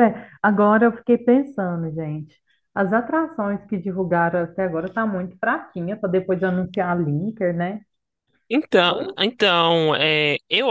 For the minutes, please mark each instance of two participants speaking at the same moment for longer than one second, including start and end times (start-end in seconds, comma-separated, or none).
none